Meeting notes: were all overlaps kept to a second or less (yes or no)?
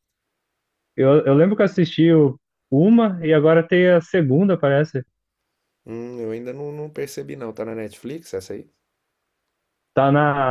yes